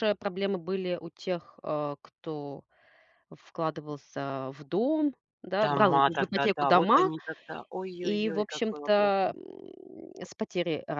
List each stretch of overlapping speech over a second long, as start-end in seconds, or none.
5.6-7.1, 8.0-9.3